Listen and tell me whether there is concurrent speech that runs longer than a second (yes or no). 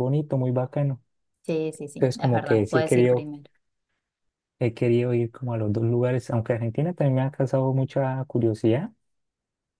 yes